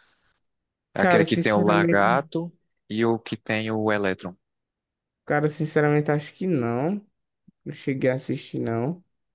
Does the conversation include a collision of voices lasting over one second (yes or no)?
yes